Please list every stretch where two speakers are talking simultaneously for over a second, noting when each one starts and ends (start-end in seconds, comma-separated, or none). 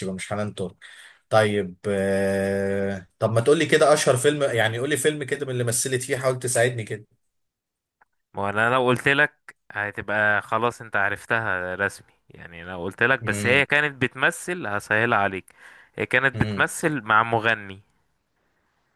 none